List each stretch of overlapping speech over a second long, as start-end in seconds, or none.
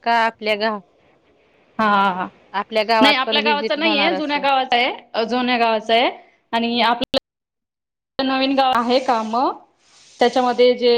3.0-4.4